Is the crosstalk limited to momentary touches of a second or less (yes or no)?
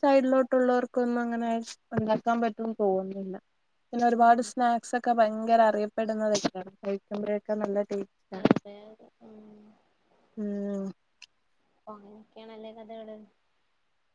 yes